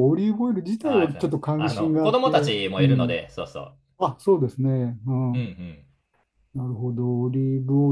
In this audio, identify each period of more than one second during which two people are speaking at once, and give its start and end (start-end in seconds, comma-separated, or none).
0.8-3.2